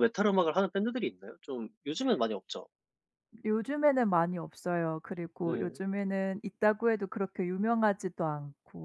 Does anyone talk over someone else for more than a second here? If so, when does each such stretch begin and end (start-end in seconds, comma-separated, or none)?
none